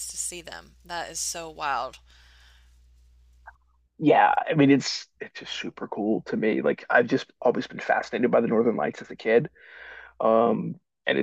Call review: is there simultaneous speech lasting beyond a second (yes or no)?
no